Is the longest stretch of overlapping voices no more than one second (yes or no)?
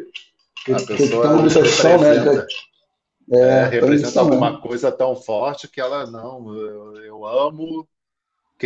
no